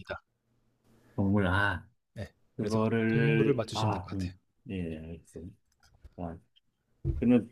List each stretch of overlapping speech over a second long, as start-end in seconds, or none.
2.6-4.3